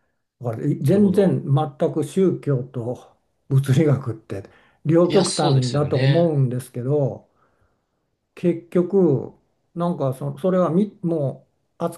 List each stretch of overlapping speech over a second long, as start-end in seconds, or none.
5.1-6.3